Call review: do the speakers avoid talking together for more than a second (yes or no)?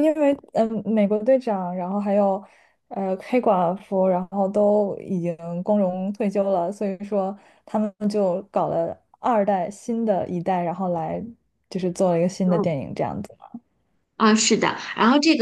yes